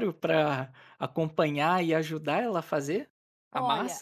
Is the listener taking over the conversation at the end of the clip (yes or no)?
yes